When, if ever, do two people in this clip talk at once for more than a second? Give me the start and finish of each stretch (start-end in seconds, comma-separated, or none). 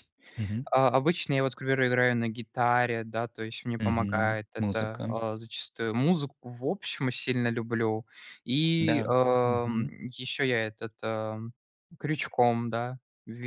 3.8-5.1